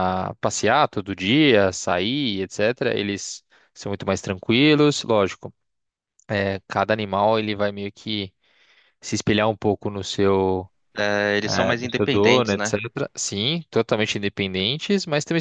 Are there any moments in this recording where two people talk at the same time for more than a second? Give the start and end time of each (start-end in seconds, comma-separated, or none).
11.4-12.8